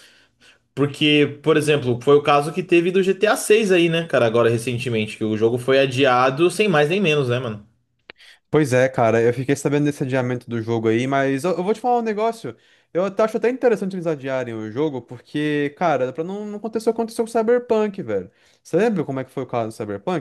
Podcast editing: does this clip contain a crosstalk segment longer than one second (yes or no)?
no